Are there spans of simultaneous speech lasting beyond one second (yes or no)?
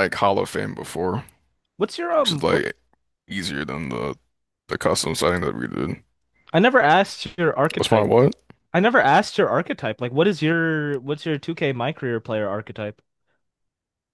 no